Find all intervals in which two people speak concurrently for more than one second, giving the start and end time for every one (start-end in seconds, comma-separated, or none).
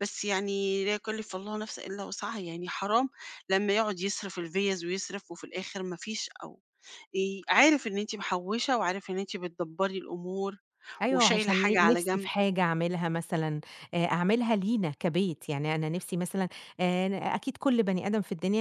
11.1-12.3